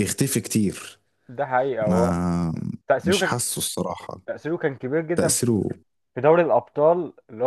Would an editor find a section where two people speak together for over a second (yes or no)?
no